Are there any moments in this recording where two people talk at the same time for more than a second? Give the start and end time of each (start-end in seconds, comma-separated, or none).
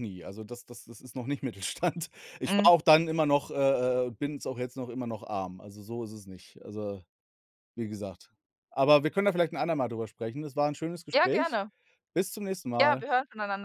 none